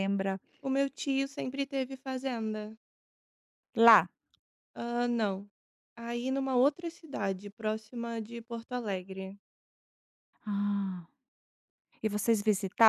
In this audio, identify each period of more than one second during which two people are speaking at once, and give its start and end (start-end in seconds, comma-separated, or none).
none